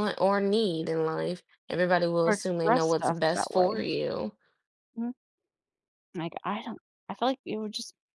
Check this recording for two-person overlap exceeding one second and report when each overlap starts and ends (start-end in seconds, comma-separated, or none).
2.3-3.9